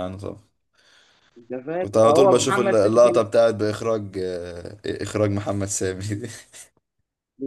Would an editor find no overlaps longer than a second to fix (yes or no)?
no